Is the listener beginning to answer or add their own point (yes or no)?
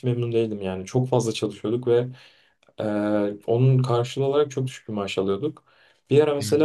no